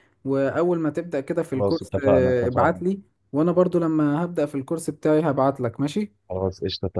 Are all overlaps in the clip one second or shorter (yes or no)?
no